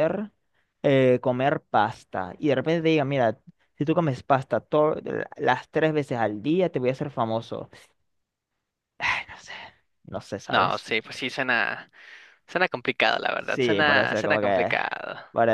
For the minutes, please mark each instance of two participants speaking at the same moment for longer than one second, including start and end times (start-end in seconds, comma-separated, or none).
13.4-14.7